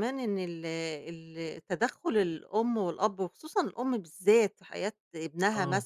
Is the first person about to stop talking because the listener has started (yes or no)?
no